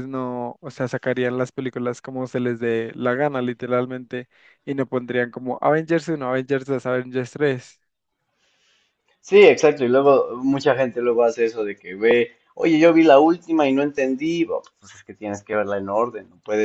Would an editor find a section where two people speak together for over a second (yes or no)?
no